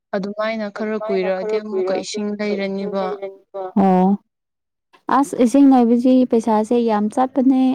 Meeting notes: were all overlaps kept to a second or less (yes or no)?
no